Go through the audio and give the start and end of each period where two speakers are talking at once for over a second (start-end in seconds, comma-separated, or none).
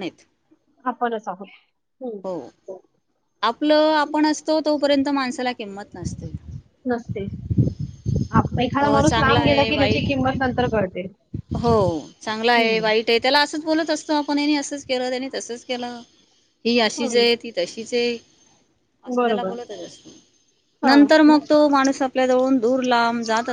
8.9-10.4